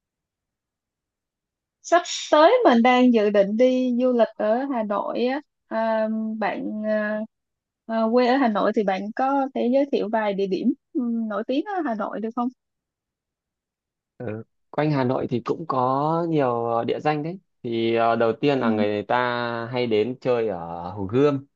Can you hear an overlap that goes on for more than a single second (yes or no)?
no